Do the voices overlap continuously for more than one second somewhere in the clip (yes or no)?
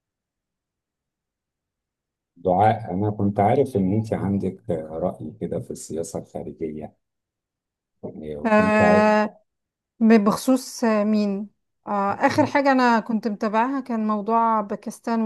no